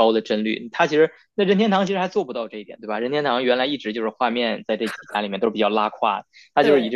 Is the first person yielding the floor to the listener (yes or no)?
no